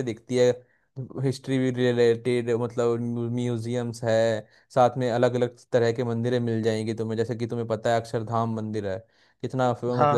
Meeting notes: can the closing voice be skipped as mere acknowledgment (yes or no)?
no